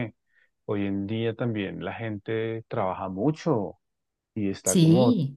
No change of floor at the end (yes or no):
yes